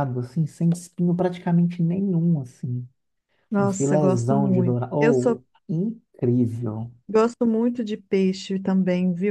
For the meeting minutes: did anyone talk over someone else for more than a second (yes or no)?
yes